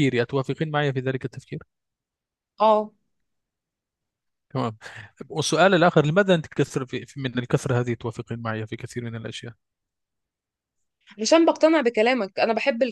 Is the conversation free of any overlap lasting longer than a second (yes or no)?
yes